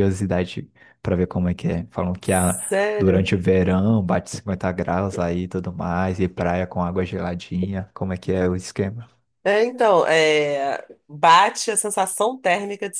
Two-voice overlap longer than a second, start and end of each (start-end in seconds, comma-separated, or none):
none